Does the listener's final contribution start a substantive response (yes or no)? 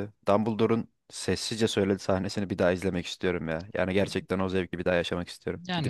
yes